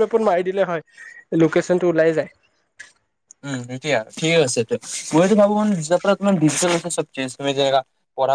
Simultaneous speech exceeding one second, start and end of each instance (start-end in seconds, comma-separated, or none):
none